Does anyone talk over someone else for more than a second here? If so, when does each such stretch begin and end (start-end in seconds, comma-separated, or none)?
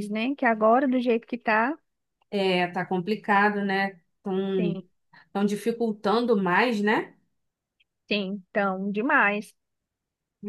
none